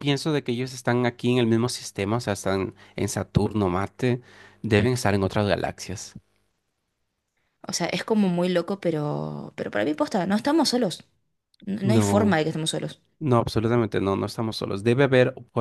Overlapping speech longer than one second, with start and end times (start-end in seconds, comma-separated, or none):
none